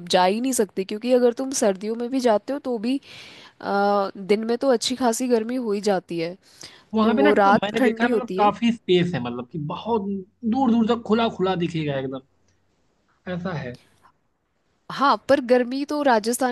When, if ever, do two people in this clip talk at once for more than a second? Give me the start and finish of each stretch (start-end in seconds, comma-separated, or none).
7.0-8.5